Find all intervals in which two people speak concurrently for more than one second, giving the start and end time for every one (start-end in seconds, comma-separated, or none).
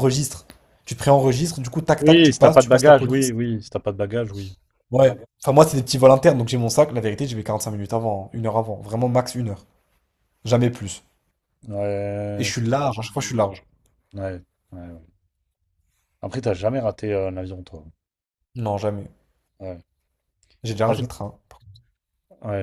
2.0-3.3